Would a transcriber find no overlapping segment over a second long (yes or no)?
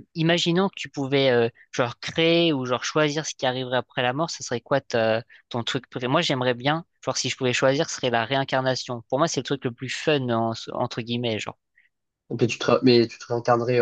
yes